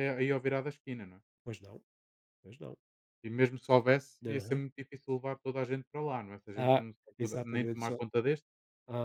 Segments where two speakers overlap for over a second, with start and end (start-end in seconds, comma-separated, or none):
6.5-8.0